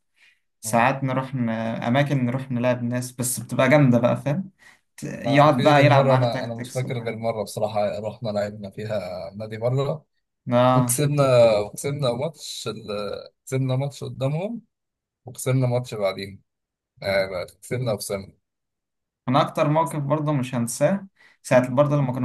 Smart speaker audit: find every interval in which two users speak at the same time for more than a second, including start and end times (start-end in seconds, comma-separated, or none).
5.2-7.2